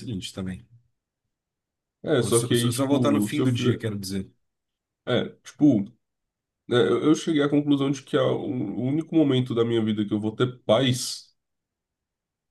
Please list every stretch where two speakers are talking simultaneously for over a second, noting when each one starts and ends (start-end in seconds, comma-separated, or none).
2.2-3.8